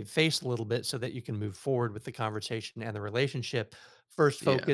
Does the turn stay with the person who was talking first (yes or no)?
yes